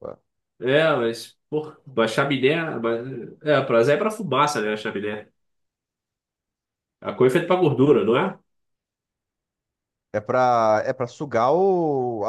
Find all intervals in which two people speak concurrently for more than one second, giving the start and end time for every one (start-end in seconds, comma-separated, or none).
none